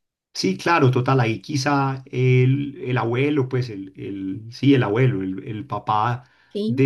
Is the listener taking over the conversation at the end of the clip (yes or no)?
no